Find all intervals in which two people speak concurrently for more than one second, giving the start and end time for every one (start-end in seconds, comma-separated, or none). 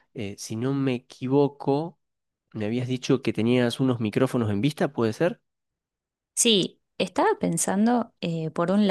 none